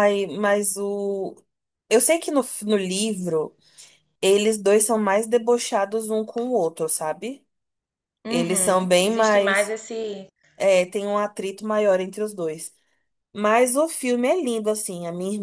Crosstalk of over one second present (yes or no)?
yes